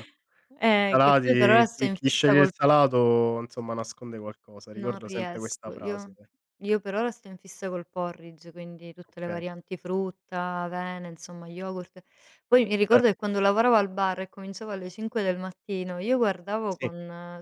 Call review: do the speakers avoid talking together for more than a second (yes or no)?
no